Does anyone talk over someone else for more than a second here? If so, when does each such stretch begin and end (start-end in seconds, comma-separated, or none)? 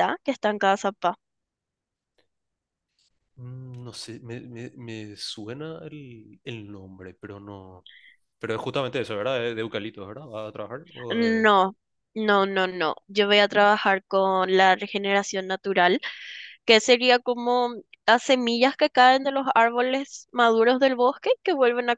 none